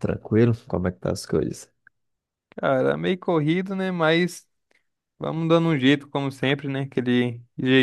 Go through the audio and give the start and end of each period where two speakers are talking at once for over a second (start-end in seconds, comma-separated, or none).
none